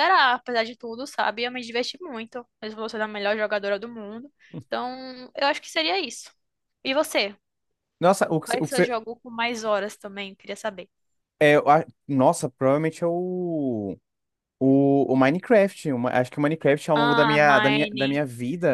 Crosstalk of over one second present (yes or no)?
yes